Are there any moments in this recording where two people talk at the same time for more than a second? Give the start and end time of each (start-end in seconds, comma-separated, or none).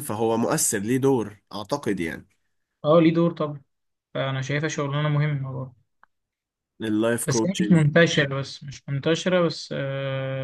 none